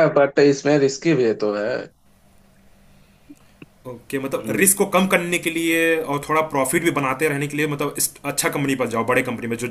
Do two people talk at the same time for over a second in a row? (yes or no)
no